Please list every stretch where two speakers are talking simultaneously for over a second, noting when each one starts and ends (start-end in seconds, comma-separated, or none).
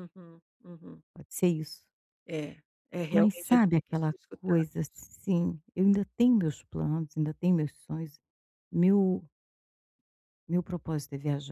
3.1-5.0